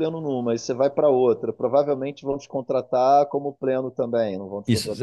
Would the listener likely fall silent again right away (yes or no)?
no